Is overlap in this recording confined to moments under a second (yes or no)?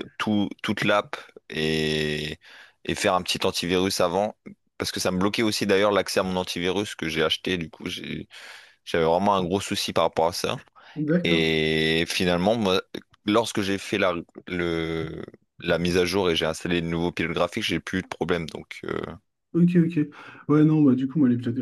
yes